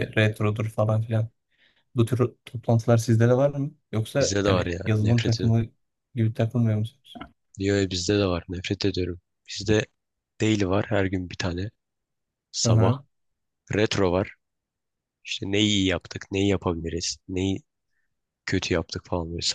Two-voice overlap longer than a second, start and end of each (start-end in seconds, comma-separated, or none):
4.2-5.5